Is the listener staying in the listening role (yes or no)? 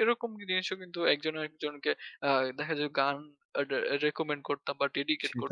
no